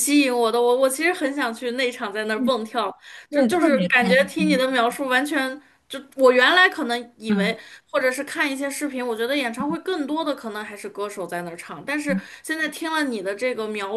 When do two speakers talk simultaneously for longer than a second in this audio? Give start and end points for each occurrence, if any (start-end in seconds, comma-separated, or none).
3.3-4.6